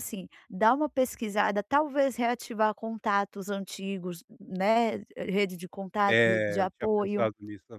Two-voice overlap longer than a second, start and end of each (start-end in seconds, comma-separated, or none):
6.1-7.3